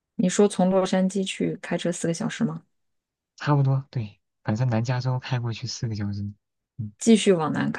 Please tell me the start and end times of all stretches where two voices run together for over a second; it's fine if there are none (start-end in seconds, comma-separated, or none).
none